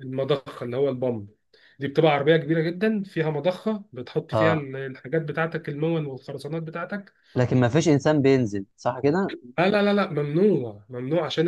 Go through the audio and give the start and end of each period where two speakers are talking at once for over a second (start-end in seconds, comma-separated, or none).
none